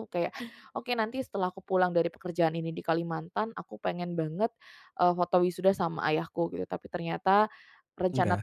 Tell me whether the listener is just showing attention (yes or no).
yes